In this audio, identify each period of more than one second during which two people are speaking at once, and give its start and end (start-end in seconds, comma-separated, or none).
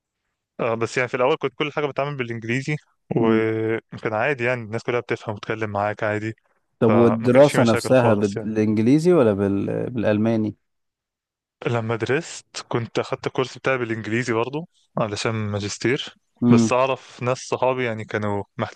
6.9-8.5